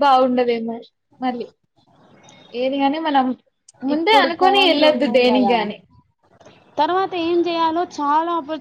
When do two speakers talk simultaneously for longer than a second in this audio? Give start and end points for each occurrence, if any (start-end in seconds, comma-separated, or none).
3.9-5.5